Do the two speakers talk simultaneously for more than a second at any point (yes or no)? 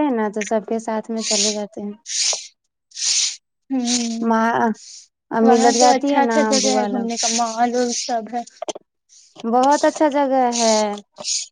yes